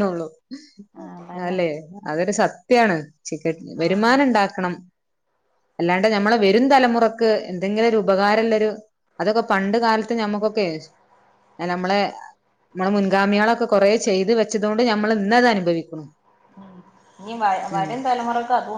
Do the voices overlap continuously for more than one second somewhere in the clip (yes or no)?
no